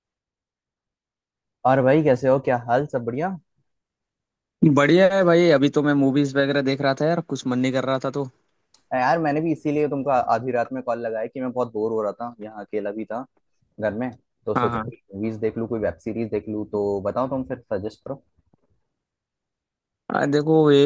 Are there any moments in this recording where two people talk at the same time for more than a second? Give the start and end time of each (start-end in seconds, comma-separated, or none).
none